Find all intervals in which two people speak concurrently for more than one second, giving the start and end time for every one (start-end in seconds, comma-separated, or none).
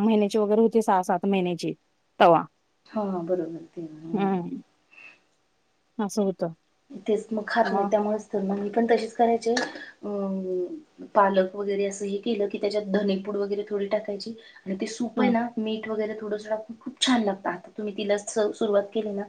none